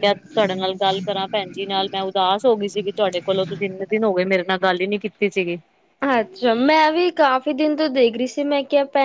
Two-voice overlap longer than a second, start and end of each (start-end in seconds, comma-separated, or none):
none